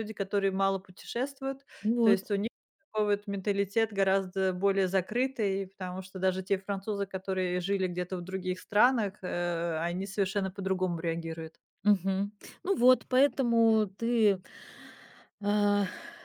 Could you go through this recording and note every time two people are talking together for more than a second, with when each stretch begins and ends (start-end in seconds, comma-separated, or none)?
none